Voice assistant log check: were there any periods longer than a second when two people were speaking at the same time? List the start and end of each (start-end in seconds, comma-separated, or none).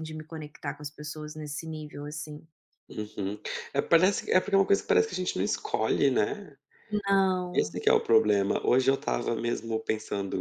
none